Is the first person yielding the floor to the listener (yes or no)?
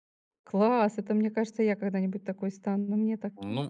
yes